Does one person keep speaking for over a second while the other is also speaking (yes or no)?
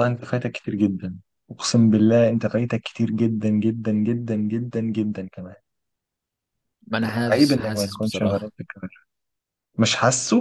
yes